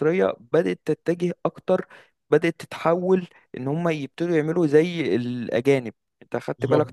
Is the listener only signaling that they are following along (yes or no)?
yes